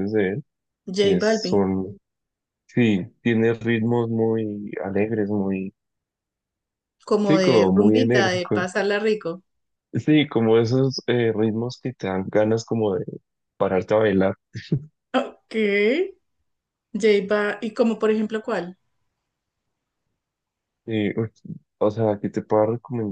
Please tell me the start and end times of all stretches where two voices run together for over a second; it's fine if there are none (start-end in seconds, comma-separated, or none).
7.2-8.7